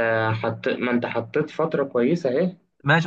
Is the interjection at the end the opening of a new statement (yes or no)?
yes